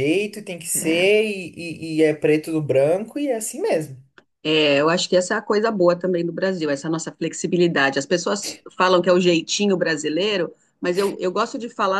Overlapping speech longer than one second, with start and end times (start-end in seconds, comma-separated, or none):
none